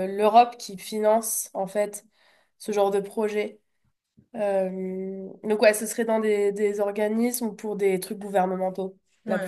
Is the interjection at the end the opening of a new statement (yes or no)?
yes